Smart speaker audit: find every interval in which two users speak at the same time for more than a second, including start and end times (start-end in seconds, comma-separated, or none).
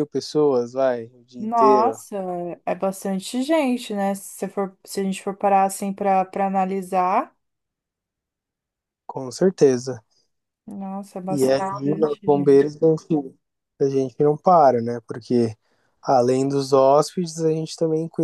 11.3-12.7